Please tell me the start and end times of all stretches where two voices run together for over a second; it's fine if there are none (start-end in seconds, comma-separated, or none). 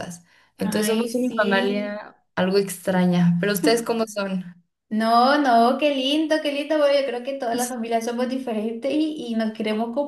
0.6-2.0